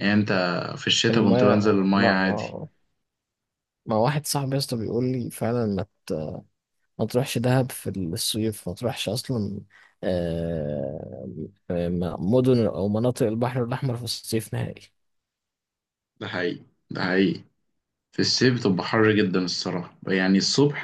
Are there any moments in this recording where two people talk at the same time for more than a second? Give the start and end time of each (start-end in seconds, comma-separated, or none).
1.1-2.6